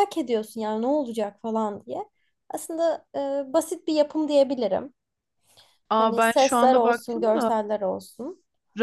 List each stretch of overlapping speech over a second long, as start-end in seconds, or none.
6.0-7.5